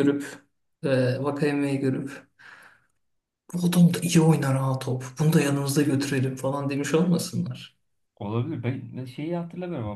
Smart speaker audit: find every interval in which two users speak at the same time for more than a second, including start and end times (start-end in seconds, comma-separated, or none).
none